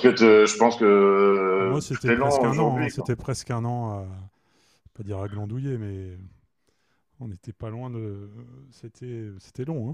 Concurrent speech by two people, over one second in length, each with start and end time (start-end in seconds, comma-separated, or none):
1.6-3.1